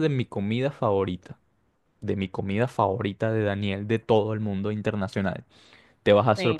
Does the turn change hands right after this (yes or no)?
no